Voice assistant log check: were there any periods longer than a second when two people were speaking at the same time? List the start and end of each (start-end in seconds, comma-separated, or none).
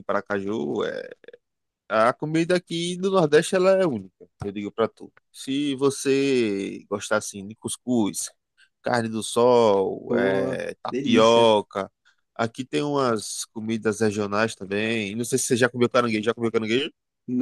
10.1-11.5